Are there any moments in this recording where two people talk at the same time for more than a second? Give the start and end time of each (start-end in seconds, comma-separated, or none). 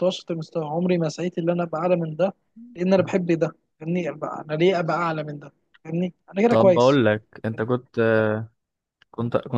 none